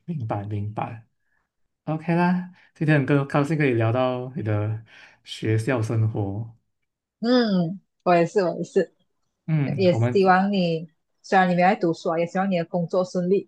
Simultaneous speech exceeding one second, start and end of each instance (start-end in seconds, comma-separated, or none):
none